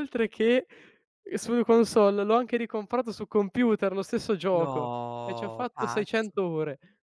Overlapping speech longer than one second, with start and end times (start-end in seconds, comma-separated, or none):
4.5-6.4